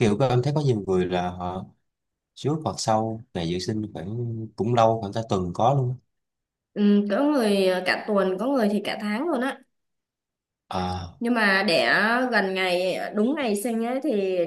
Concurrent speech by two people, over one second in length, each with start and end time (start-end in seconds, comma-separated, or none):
none